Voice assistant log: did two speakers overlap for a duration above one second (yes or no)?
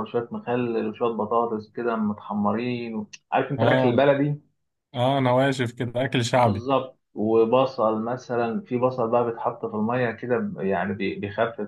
no